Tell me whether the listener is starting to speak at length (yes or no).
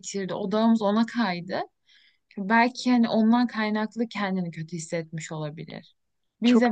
yes